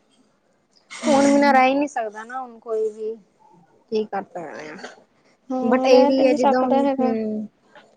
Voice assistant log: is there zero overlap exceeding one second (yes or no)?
no